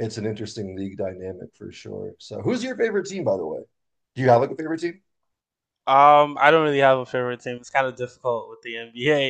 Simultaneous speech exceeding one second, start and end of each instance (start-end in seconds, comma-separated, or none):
none